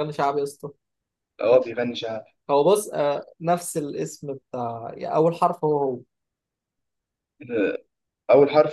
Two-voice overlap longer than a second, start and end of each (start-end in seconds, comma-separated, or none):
none